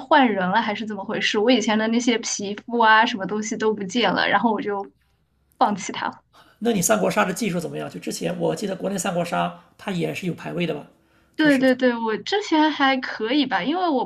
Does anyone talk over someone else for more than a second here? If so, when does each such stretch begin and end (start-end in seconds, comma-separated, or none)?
none